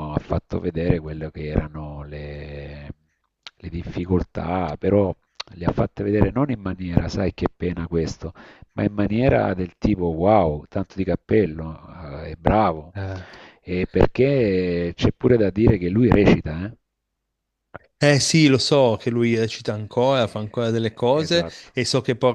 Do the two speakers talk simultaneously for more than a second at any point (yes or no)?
yes